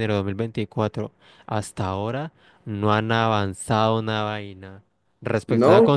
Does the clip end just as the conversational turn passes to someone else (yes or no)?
no